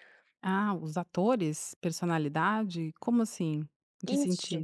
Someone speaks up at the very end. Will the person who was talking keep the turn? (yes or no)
no